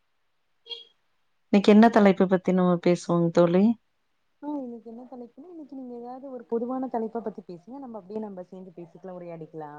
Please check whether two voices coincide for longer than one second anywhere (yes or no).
no